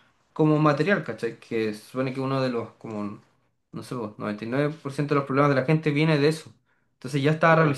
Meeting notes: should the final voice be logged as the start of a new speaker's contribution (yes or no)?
no